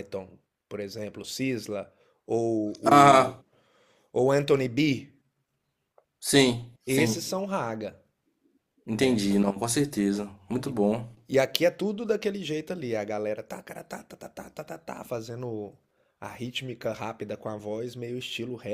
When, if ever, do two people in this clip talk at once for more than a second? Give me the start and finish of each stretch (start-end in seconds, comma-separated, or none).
none